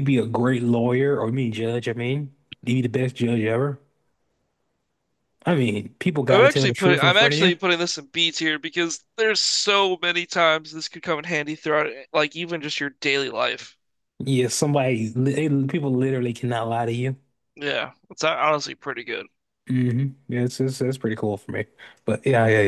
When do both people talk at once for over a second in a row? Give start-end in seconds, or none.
6.3-7.5